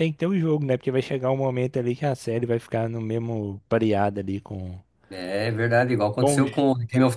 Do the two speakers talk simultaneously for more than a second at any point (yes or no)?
no